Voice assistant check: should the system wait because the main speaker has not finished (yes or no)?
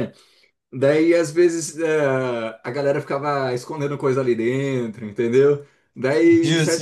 yes